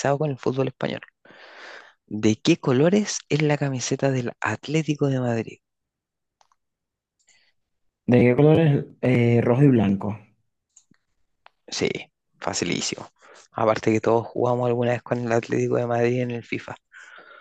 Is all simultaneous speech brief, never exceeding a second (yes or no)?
yes